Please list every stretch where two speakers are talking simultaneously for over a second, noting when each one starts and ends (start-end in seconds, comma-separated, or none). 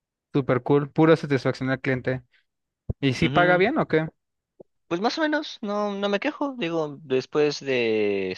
none